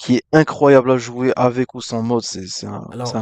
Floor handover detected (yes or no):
yes